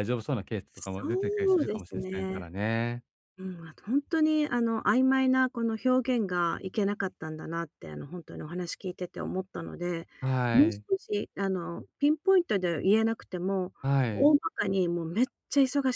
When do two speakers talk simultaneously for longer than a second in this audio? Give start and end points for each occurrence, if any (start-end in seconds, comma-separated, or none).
1.0-2.5